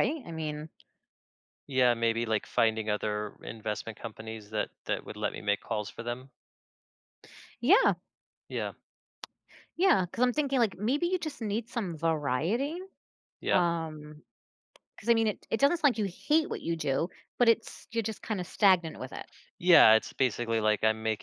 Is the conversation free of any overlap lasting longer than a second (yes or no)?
yes